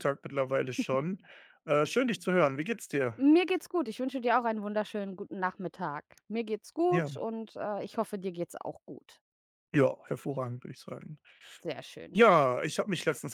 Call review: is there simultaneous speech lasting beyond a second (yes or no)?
no